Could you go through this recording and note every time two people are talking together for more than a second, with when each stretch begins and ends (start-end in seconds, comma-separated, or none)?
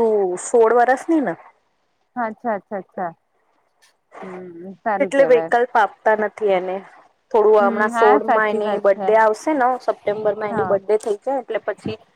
7.6-9.1